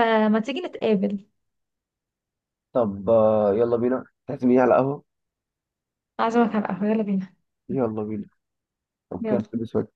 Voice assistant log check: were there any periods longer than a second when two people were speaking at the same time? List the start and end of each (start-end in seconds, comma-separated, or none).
none